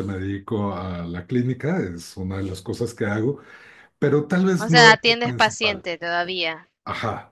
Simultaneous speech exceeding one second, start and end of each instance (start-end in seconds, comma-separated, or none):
4.6-5.8